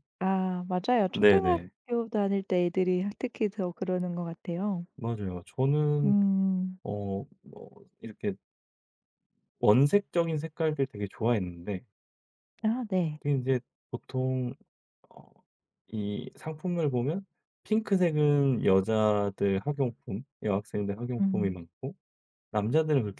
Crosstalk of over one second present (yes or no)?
no